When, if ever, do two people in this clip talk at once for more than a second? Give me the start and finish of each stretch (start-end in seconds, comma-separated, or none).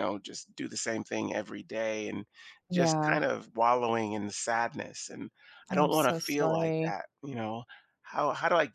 5.7-6.9